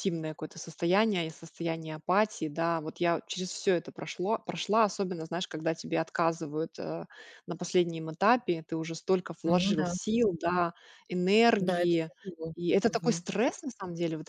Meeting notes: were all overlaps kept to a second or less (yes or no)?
yes